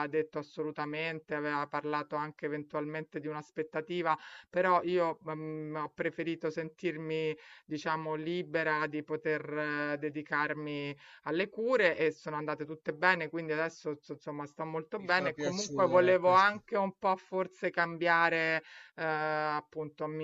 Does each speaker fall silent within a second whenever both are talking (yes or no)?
no